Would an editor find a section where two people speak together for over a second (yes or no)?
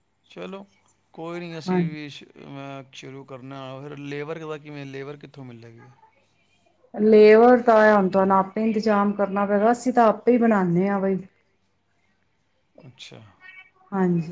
no